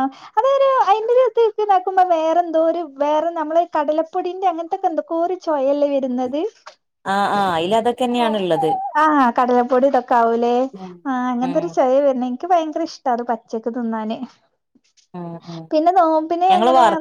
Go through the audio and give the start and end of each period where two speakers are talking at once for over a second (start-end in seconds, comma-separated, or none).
none